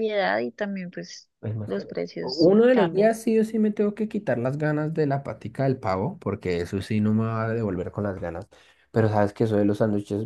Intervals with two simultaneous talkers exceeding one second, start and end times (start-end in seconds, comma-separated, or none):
1.6-3.1